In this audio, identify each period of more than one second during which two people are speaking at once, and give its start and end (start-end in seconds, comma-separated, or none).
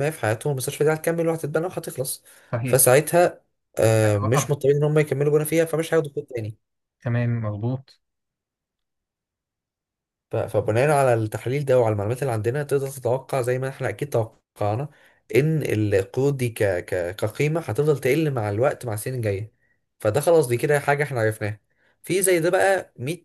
none